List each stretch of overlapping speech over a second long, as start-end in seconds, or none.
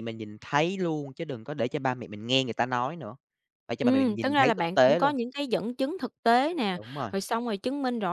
3.8-5.1